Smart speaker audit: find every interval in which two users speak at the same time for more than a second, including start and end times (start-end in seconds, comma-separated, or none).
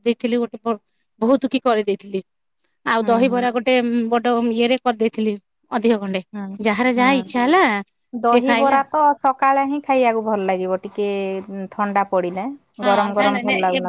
none